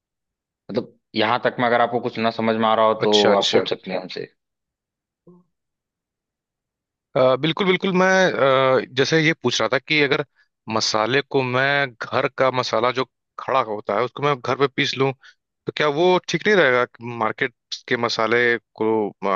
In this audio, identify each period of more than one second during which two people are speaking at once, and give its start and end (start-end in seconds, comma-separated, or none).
none